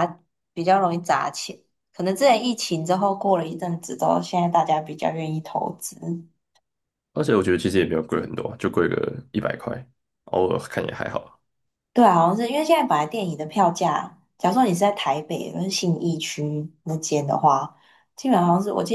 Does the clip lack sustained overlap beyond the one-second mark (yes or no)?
yes